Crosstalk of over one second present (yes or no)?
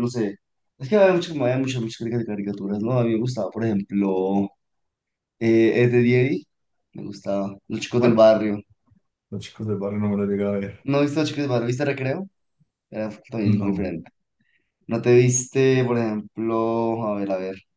no